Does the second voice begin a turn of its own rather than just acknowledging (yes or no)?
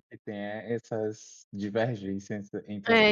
yes